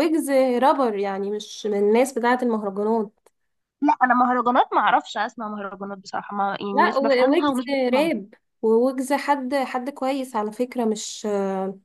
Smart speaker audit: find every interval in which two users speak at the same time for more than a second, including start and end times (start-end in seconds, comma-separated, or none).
6.7-8.1